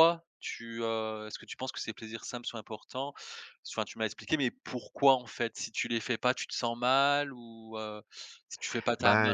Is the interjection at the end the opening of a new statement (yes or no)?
yes